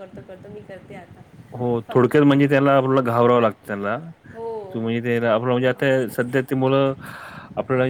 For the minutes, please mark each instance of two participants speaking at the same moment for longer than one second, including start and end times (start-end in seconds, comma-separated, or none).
none